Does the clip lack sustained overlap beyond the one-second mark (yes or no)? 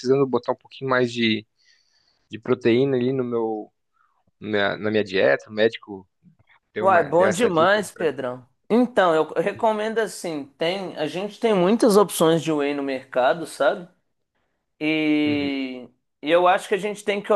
no